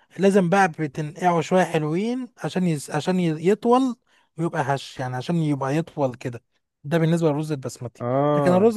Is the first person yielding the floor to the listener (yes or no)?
no